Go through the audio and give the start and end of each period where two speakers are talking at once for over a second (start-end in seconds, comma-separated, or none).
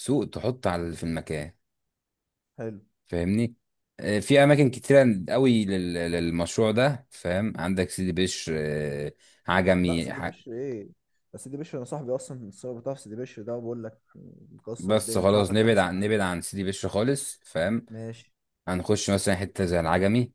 14.8-16.1